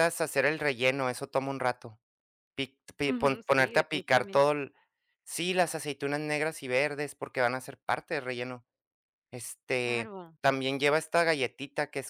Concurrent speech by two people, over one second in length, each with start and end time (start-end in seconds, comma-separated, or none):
3.1-4.5